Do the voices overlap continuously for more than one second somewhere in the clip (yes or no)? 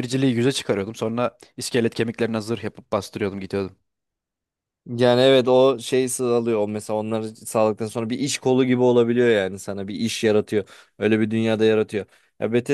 no